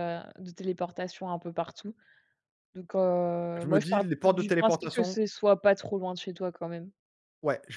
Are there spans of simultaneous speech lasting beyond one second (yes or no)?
yes